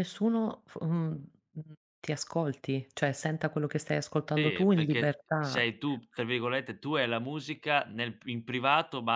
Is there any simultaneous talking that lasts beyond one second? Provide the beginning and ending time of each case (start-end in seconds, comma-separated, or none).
4.3-5.7